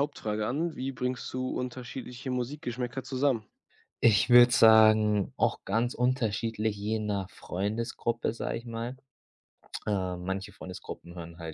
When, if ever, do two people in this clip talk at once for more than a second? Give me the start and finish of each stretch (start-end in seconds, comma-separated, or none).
none